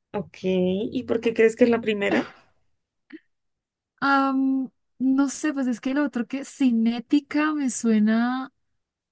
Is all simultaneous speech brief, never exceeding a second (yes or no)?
yes